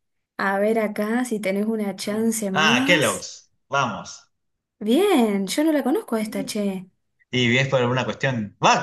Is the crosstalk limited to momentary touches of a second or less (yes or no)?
no